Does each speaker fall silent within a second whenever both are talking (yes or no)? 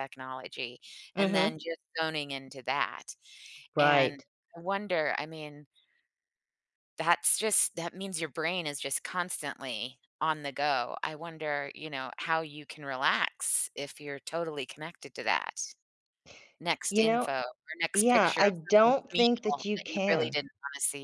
no